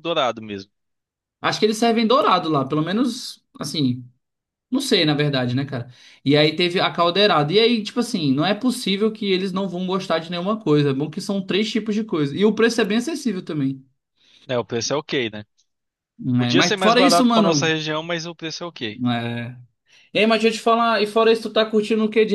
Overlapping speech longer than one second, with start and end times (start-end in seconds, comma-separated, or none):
16.4-17.8